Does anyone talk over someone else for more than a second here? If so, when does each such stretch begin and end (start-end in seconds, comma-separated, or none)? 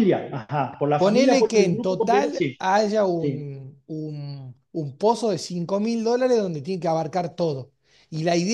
1.0-2.6